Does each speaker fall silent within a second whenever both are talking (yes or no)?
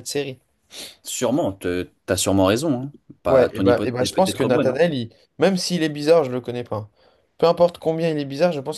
no